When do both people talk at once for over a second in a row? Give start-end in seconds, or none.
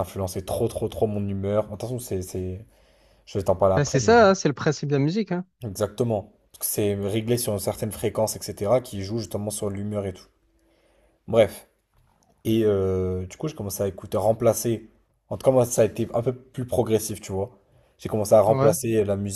none